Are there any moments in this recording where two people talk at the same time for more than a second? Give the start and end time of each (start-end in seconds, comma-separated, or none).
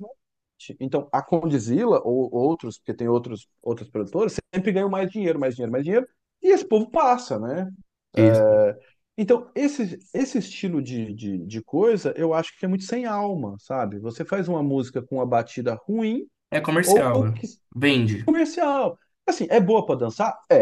none